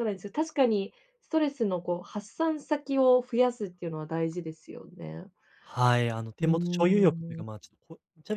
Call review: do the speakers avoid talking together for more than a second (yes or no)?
yes